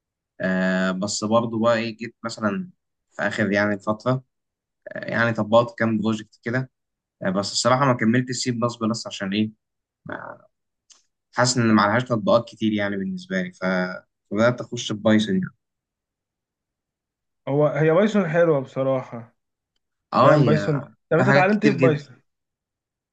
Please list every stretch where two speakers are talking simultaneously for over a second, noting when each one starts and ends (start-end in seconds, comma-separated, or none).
20.2-22.1